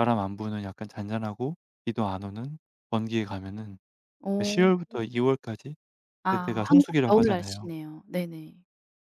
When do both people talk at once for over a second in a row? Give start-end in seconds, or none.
6.3-7.7